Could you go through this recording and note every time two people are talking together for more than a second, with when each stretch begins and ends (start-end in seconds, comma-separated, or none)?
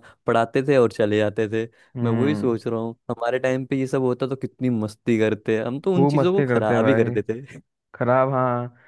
5.9-7.2